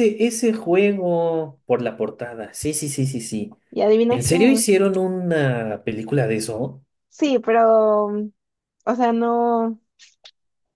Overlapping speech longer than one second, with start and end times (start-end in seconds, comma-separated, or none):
none